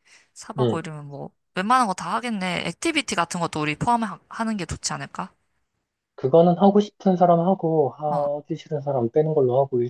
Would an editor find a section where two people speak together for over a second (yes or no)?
no